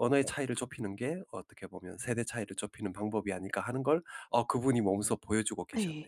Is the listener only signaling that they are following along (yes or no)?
no